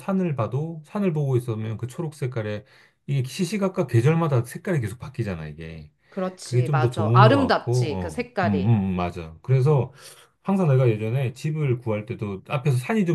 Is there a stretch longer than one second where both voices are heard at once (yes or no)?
yes